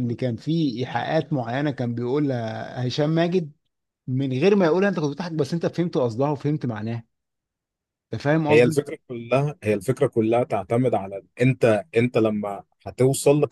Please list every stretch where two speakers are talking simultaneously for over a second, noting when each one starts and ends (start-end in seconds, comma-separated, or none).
none